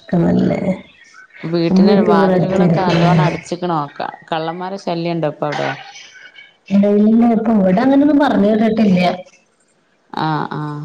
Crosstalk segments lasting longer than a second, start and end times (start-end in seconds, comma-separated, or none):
1.7-3.5